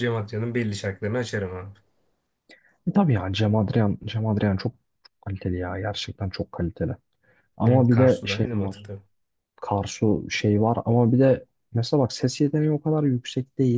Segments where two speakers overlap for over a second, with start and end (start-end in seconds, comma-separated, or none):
7.7-8.9